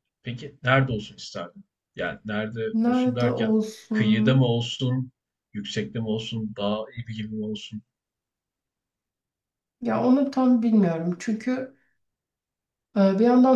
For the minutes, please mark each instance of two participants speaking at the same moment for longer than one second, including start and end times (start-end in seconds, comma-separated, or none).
2.7-4.5